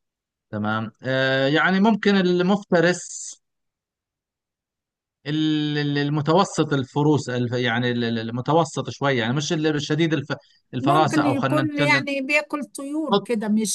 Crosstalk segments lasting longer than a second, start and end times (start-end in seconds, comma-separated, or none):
10.8-12.1